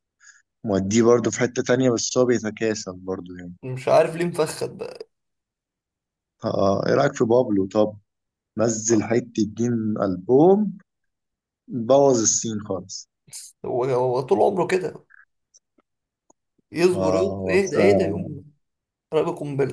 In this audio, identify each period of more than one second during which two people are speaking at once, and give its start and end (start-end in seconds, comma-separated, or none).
16.9-18.4